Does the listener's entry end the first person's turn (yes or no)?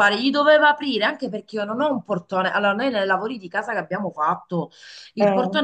no